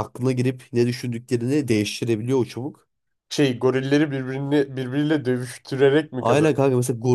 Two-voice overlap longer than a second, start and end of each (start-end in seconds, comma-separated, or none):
none